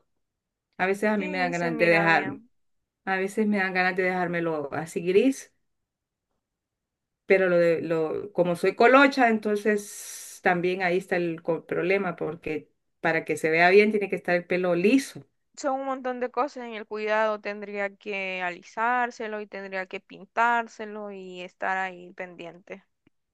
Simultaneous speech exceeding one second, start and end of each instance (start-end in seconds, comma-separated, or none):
1.2-2.4